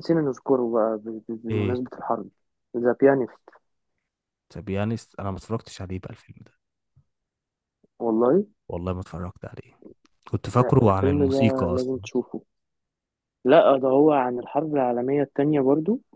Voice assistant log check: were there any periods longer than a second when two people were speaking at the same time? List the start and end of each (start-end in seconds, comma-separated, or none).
10.6-12.0